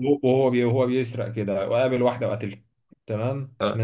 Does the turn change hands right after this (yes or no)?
no